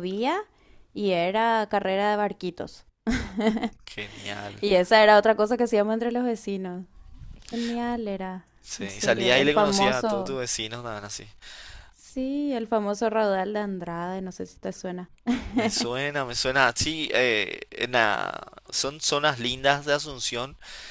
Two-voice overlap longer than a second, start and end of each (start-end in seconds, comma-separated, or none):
8.6-10.4